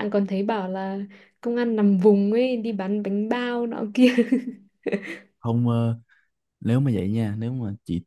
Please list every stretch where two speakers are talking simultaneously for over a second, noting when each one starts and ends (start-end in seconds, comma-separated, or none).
none